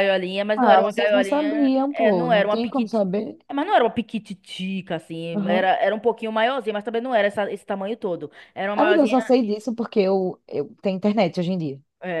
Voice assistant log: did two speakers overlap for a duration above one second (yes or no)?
yes